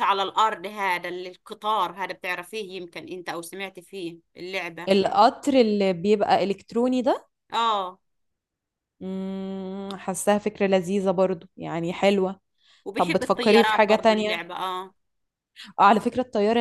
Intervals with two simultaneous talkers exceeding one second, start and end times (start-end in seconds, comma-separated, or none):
12.9-14.4